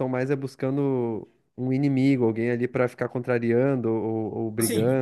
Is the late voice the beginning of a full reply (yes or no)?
yes